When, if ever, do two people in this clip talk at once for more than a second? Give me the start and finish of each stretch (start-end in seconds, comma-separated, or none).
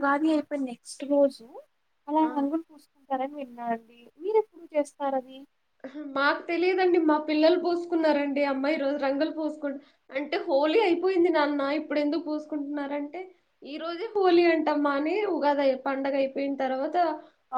none